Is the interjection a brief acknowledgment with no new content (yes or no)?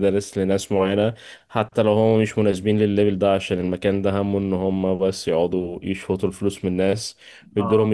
yes